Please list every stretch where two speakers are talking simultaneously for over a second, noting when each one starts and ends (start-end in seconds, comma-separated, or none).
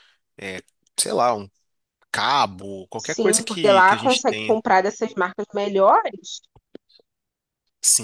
3.0-4.6